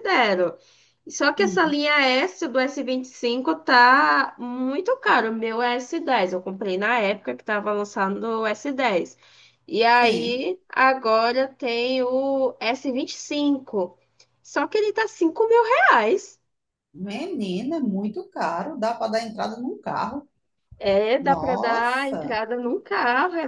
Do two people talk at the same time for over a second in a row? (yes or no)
yes